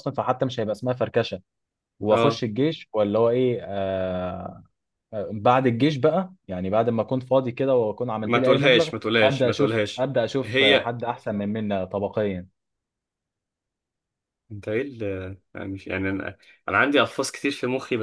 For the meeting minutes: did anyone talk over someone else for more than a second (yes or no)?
yes